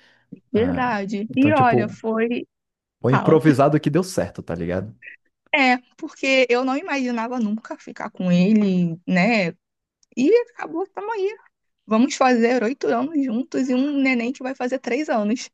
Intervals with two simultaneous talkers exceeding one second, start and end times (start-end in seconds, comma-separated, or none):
0.5-2.0